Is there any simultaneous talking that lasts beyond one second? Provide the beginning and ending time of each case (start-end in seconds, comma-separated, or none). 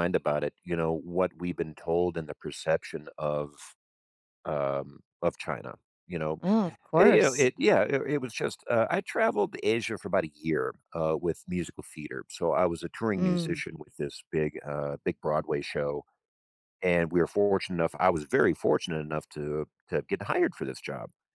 none